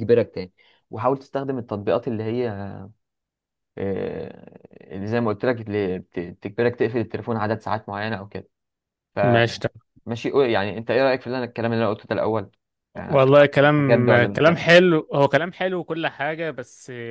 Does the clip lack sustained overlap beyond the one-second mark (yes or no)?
no